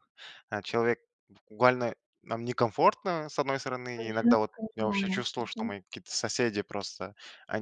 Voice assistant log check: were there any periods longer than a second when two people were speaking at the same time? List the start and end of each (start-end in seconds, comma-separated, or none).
4.0-5.7